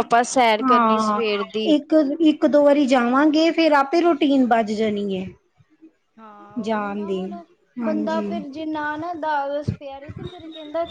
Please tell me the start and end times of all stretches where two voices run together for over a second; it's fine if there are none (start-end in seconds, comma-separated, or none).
none